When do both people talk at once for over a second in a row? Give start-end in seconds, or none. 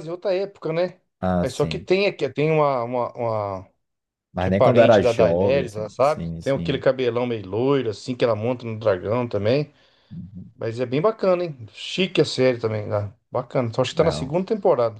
4.4-6.8